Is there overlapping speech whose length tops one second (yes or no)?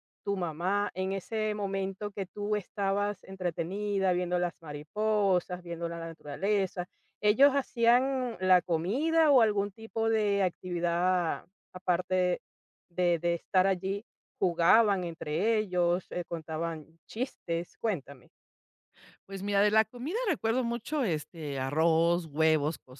no